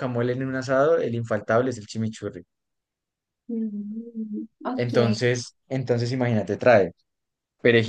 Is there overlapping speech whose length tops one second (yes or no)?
no